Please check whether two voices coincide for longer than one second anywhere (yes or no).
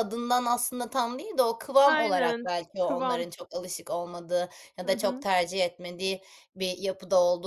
yes